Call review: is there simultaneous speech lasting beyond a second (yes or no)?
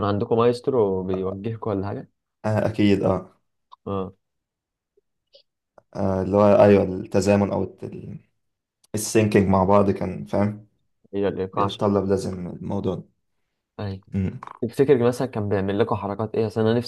no